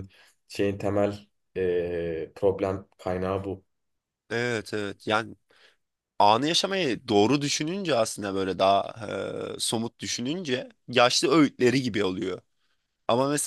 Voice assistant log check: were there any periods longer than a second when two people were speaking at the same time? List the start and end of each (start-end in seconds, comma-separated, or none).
none